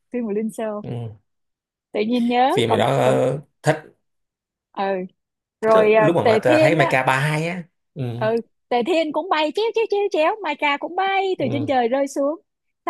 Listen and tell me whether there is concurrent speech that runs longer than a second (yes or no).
yes